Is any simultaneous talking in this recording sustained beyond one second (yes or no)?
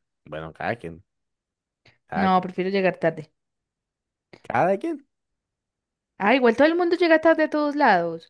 no